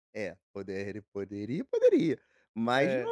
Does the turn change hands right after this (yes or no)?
no